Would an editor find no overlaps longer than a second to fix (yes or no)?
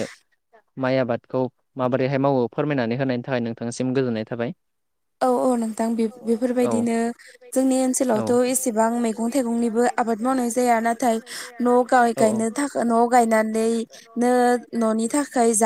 no